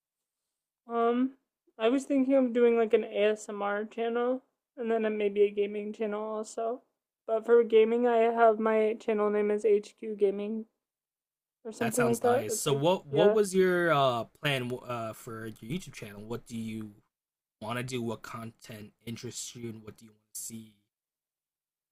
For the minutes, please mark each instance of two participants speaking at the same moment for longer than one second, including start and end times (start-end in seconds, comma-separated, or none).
11.8-13.4